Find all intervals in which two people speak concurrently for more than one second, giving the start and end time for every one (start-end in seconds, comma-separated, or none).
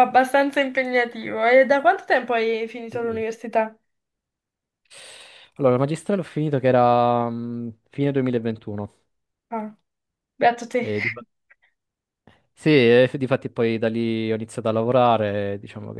none